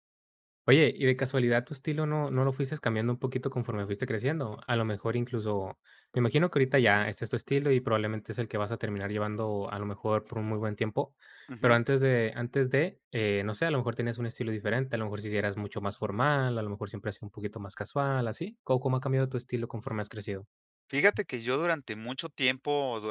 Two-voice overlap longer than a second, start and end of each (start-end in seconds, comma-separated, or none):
none